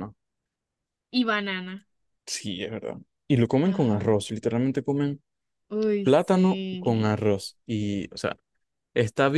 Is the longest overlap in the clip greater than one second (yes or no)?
yes